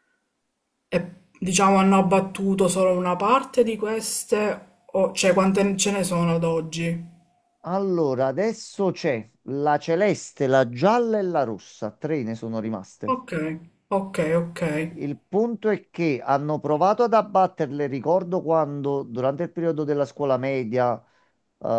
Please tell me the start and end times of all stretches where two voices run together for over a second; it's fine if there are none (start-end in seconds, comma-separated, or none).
none